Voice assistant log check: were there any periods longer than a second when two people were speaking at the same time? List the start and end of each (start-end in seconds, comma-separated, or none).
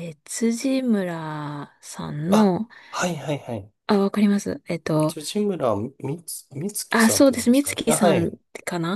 6.9-8.2